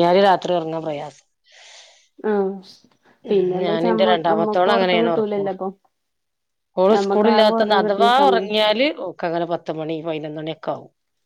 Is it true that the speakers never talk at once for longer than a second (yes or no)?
no